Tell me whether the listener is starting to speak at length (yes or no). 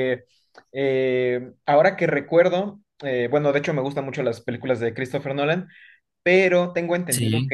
no